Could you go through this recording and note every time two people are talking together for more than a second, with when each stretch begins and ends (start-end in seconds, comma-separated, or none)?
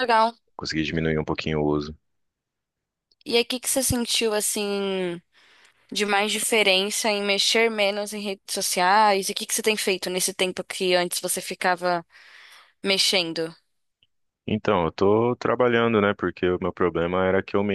none